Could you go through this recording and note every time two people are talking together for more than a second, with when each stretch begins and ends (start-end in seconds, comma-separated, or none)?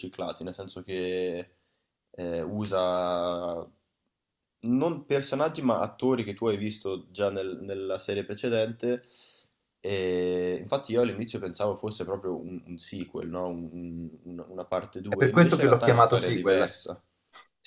15.1-16.8